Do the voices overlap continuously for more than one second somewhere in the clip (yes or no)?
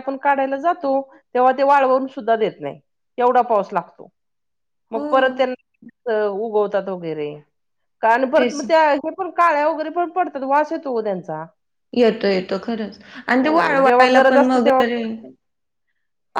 yes